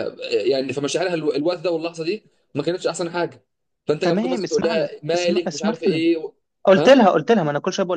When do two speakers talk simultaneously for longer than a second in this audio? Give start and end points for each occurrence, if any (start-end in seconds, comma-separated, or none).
4.0-6.0